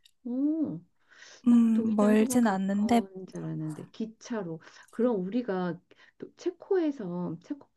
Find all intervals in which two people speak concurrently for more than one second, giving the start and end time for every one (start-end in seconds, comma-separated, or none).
1.5-3.0